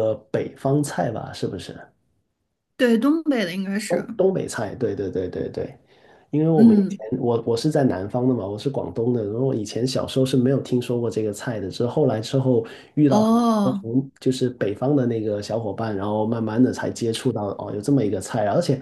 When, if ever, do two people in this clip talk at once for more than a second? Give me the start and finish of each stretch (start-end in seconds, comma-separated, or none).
none